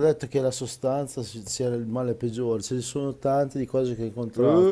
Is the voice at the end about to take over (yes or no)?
no